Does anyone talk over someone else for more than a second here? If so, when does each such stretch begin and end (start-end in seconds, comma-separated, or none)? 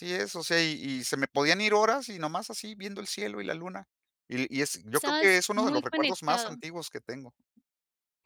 4.9-6.5